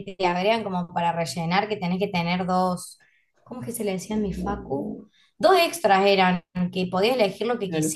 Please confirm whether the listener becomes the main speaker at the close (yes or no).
no